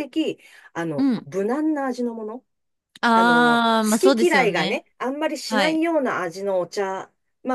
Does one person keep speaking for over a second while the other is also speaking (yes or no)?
yes